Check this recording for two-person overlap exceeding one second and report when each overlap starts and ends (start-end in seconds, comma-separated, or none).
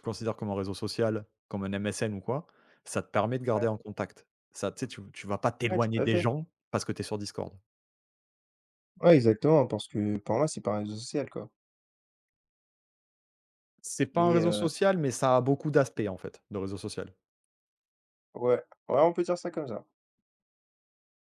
none